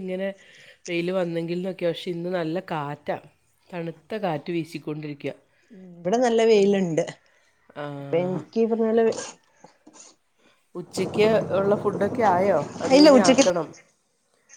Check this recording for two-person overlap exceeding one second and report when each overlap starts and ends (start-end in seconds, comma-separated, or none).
none